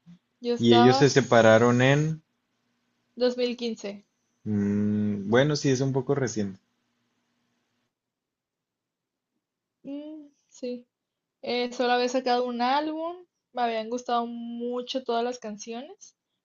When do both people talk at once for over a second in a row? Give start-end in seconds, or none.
0.6-2.1